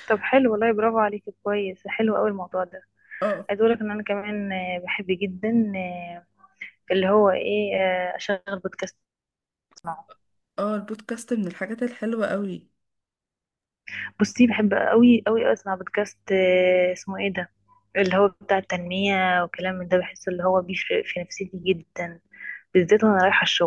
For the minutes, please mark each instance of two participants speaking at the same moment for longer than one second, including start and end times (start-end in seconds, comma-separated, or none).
none